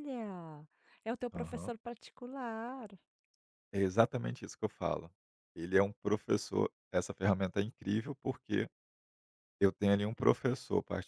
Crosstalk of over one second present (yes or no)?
no